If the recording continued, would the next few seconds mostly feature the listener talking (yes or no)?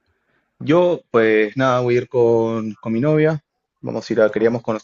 no